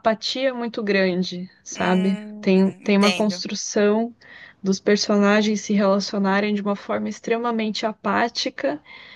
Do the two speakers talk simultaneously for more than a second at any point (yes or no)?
yes